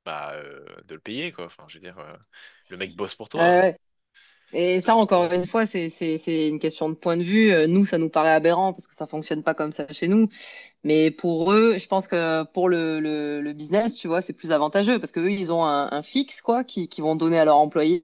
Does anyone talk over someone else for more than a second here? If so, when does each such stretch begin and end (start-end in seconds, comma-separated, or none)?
none